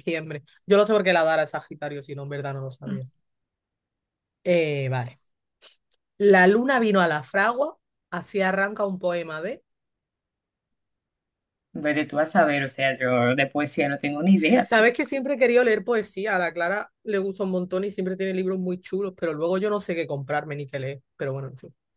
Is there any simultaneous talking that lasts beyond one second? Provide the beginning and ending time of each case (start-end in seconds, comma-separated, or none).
none